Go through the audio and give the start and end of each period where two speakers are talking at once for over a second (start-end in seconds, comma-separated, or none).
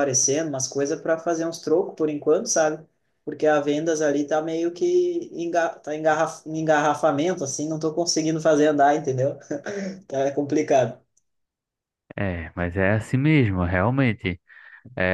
none